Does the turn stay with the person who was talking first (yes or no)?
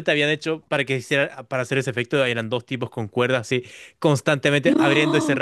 yes